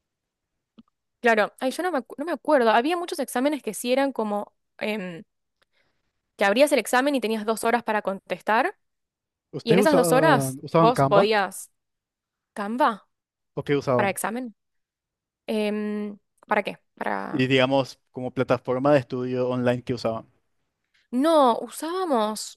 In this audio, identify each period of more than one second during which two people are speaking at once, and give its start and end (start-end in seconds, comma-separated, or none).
9.6-11.3